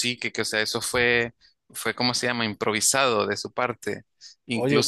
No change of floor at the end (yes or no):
yes